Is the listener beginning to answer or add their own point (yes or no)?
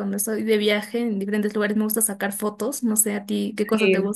yes